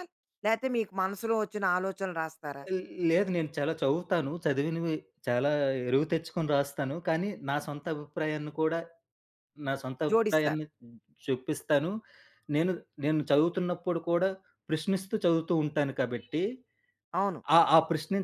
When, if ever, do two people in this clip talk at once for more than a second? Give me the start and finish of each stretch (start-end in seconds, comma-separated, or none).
none